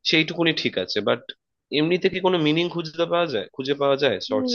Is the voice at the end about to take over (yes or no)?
yes